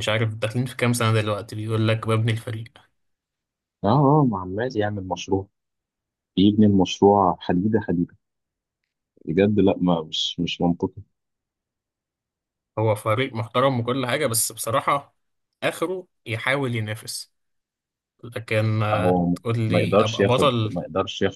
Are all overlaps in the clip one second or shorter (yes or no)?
no